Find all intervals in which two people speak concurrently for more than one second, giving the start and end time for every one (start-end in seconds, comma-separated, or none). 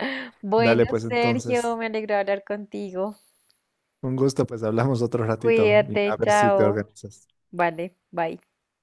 0.6-1.8, 5.4-6.8